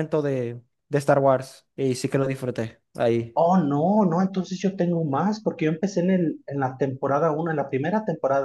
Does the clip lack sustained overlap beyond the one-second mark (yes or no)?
yes